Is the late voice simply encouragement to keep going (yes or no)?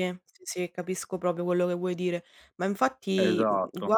yes